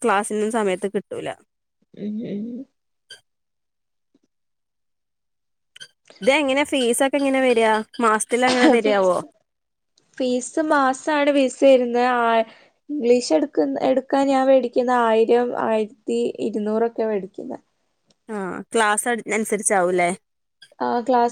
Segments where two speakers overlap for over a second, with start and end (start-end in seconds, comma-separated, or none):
none